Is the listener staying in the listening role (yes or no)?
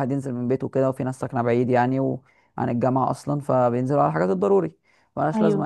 yes